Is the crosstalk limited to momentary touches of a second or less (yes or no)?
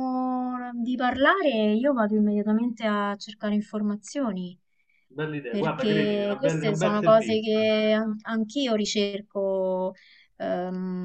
no